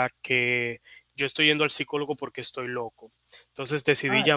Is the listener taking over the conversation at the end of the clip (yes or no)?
no